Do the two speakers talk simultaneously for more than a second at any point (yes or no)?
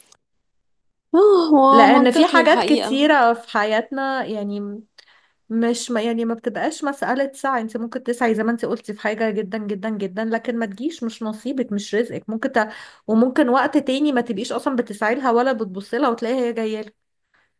yes